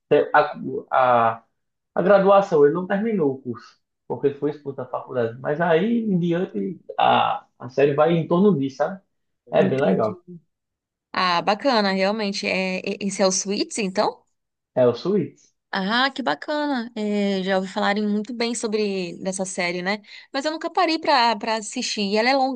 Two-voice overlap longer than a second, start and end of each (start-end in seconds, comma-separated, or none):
none